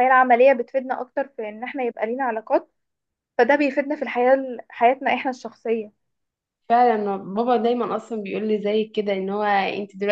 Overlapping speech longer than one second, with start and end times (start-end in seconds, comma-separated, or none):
none